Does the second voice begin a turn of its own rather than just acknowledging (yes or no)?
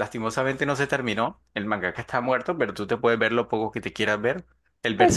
no